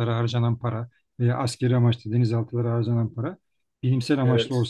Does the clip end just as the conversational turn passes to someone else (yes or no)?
no